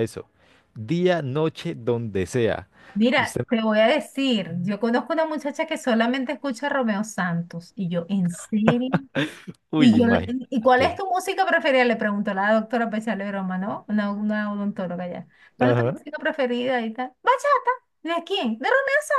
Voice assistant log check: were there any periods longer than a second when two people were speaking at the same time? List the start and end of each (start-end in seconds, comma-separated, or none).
9.8-11.0